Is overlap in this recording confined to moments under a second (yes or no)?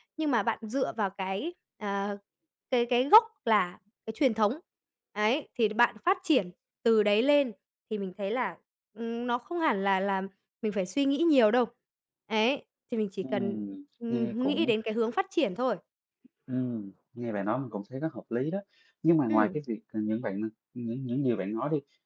no